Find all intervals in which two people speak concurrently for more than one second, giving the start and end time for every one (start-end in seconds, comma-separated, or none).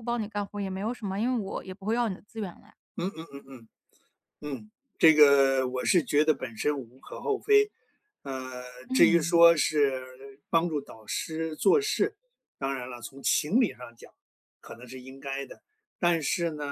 none